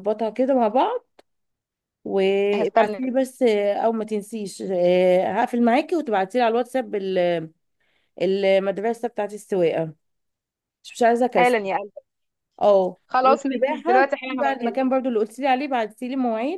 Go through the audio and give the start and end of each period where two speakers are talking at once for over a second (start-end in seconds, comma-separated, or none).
13.1-14.8